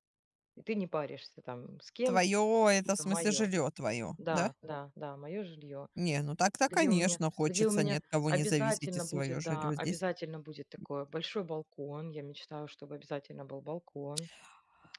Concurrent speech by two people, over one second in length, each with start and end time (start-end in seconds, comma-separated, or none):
6.7-10.0